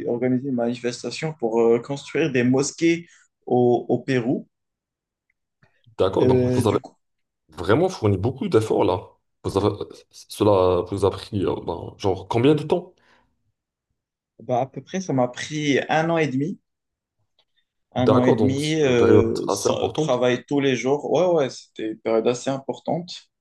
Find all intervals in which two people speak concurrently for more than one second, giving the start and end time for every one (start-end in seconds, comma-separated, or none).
18.0-20.2